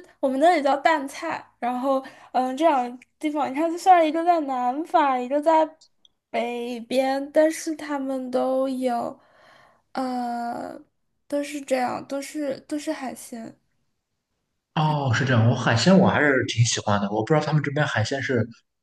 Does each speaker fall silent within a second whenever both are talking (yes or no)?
yes